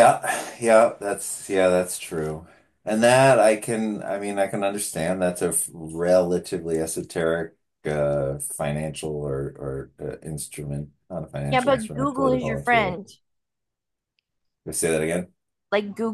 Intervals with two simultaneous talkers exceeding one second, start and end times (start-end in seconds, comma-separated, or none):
11.5-13.0